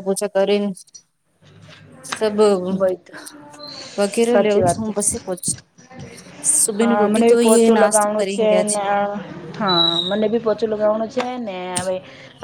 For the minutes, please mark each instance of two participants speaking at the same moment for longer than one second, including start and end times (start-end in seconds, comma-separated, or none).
6.8-8.3